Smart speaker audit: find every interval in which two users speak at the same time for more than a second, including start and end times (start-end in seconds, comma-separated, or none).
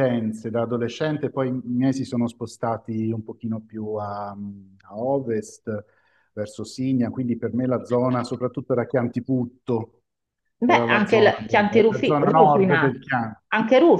10.6-13.0